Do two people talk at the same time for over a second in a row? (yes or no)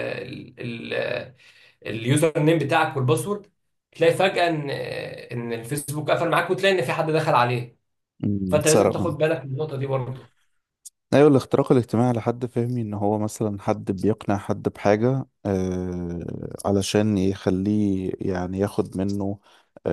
no